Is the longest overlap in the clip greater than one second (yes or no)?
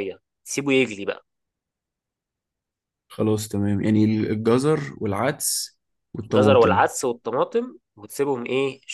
no